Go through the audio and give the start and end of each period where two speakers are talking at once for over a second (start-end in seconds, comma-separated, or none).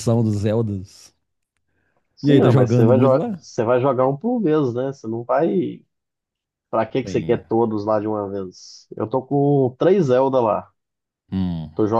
2.2-3.4